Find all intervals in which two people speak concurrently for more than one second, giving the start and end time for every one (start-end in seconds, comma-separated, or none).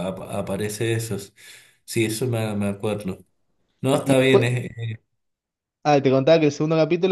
none